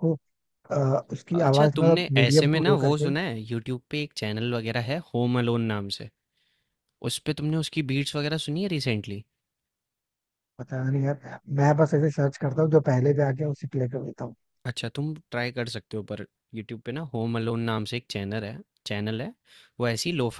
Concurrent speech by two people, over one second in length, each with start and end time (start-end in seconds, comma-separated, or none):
1.4-3.1